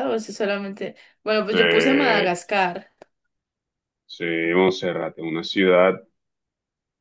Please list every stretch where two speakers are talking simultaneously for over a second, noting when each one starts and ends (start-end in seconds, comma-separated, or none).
none